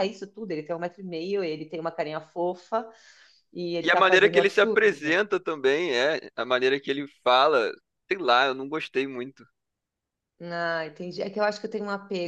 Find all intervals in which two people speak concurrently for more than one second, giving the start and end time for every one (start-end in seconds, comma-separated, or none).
3.8-5.1